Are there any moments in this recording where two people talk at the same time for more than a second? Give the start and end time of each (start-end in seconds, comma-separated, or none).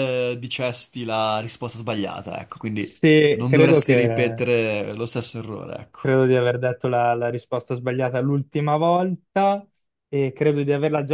2.8-4.4